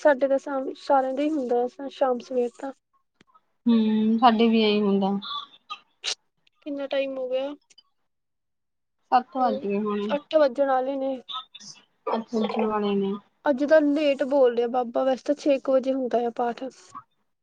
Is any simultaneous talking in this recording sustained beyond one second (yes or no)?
no